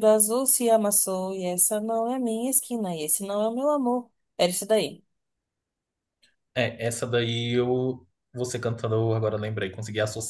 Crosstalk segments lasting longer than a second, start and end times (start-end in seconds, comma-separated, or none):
none